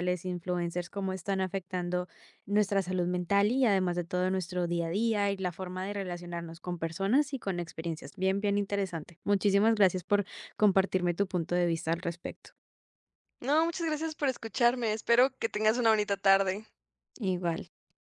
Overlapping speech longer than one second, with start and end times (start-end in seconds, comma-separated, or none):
none